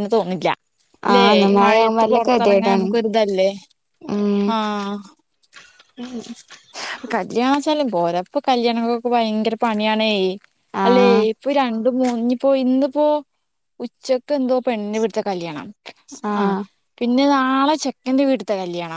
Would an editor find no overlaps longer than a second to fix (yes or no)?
no